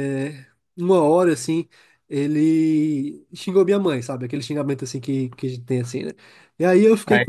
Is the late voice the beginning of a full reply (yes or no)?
yes